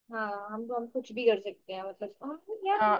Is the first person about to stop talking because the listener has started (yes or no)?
yes